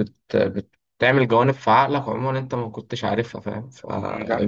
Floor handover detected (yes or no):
no